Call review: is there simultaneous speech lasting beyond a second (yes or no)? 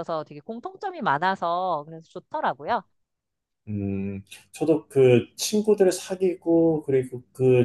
no